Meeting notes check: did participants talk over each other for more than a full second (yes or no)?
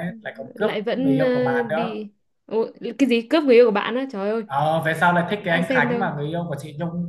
yes